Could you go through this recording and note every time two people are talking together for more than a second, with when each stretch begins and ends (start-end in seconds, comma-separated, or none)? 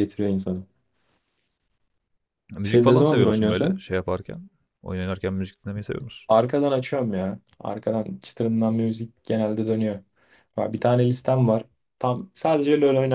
2.6-3.8